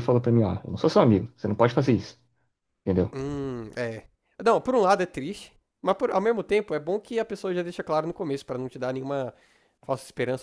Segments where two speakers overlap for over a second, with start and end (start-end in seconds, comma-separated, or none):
none